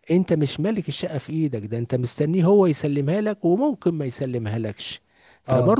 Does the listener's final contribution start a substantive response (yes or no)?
no